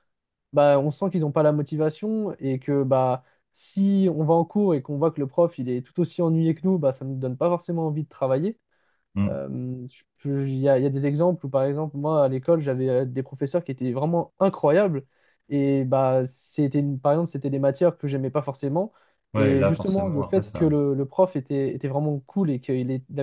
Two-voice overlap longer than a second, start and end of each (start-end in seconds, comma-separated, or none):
19.3-20.7